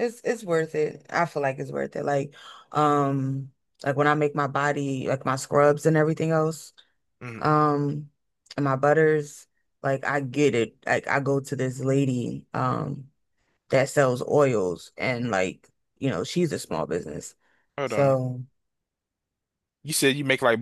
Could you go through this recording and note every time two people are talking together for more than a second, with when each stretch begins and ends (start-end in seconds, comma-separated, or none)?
none